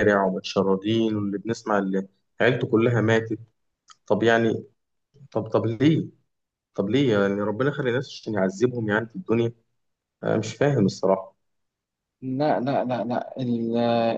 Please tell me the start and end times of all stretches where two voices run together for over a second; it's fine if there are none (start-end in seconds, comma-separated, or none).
none